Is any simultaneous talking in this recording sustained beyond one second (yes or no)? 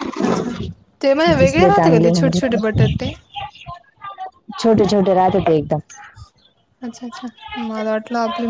yes